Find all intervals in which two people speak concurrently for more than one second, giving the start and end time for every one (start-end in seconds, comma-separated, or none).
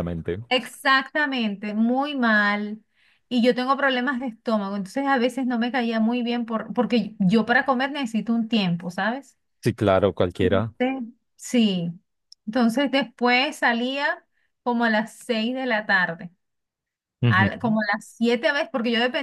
none